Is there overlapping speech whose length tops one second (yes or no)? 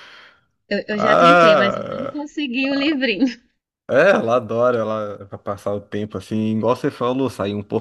yes